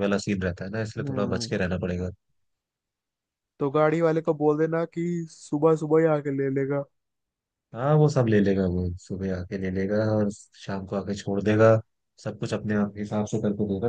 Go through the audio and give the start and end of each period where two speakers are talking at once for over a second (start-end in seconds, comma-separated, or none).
none